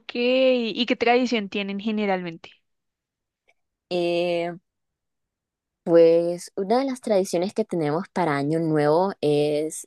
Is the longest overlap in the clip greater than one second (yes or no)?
no